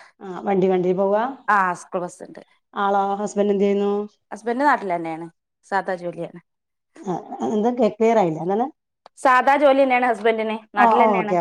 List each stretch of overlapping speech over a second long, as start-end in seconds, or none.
none